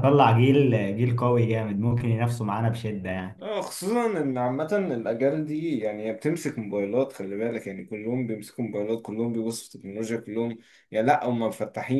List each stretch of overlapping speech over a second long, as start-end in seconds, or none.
none